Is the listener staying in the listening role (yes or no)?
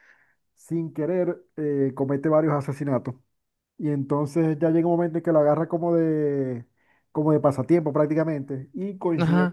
yes